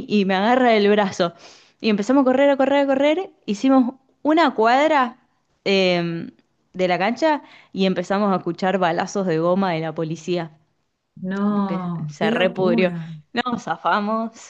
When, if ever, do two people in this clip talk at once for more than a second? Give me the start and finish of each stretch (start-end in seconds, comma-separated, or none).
11.4-12.9